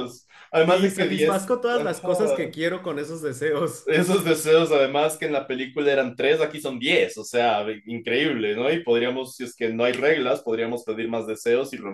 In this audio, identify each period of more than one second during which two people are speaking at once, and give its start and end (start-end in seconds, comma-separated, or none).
0.7-2.2